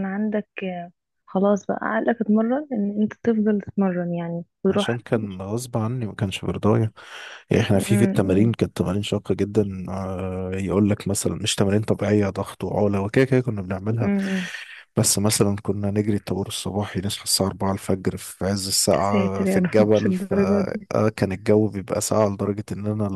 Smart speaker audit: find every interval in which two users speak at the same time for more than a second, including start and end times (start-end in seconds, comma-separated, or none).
18.9-20.9